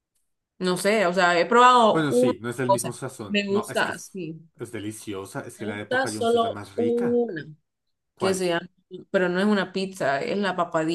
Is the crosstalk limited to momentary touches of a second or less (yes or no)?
no